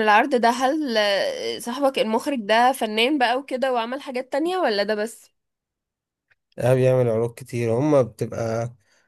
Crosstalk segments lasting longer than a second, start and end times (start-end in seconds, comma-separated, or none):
none